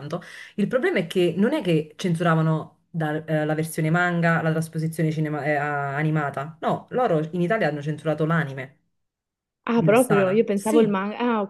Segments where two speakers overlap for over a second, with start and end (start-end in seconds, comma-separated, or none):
9.7-10.9